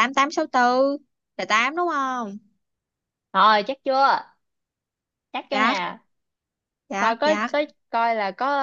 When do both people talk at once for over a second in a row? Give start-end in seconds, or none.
none